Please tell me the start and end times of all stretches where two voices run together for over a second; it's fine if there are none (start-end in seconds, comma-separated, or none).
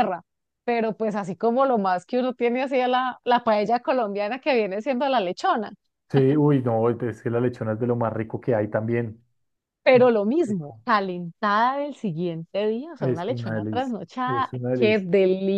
13.0-15.1